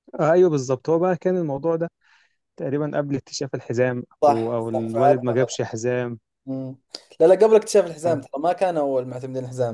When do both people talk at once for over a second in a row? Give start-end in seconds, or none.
4.2-5.6